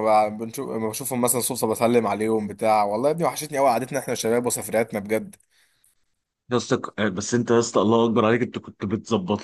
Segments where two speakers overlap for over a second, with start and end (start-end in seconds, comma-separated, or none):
none